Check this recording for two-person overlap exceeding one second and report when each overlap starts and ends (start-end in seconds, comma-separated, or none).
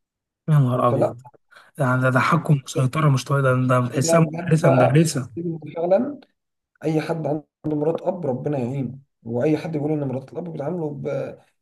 3.9-5.3